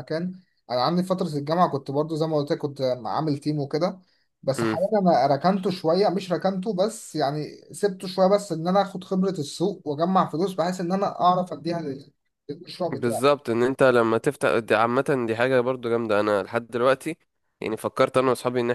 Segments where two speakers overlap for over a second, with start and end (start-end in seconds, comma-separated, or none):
none